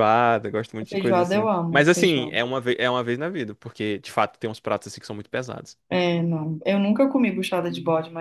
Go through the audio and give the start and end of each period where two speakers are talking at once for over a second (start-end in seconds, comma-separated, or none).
0.9-2.4